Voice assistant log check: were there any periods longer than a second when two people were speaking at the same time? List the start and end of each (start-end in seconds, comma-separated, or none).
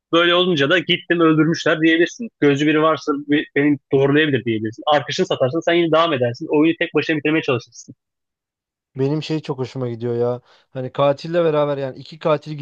none